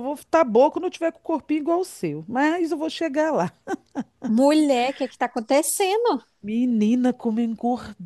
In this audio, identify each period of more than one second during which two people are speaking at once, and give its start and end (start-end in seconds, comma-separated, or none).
none